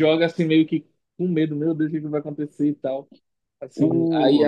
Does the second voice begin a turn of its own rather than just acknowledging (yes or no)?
no